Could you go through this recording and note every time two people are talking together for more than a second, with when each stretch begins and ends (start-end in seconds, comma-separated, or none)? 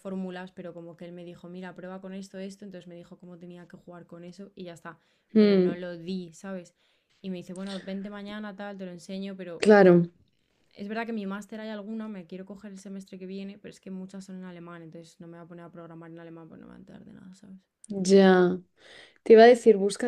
none